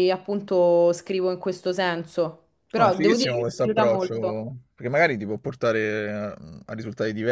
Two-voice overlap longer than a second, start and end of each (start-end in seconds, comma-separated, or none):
2.8-4.1